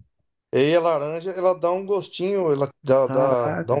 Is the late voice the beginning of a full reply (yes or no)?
no